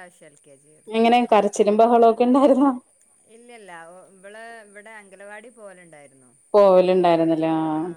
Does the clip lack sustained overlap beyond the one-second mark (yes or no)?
yes